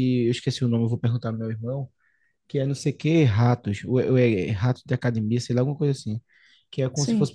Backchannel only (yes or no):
yes